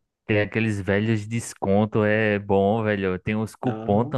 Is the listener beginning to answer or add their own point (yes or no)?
no